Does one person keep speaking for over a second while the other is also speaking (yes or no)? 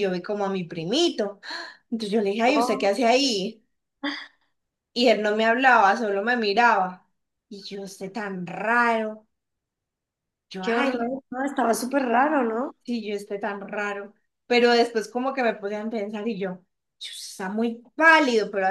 no